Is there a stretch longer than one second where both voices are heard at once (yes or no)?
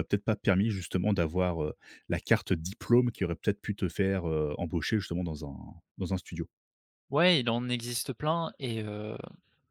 no